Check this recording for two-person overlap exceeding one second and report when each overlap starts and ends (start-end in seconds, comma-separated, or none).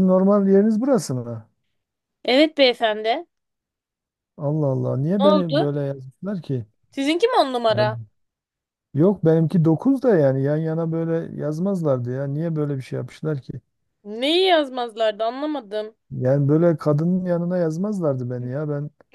none